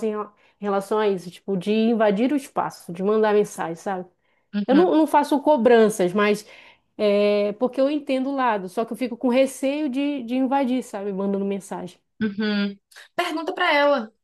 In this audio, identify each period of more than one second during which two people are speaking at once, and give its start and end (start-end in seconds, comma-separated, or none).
none